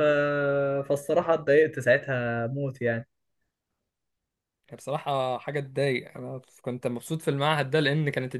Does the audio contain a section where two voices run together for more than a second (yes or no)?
no